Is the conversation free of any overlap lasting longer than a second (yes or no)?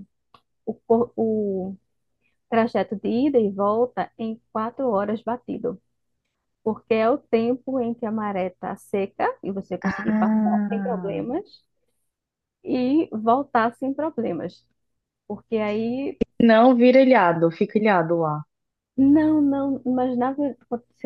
no